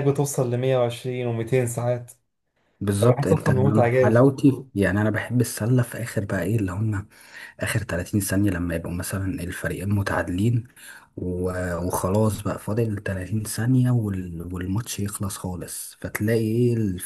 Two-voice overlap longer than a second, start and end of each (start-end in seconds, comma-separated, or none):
3.0-4.7